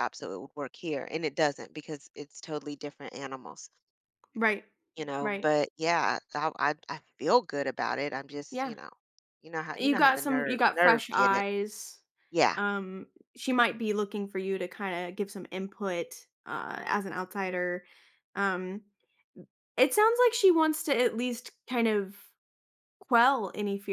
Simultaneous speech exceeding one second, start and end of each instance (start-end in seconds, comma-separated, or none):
9.8-11.4